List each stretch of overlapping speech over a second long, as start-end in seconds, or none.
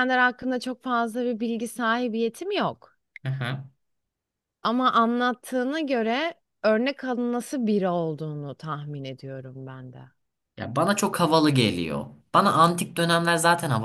none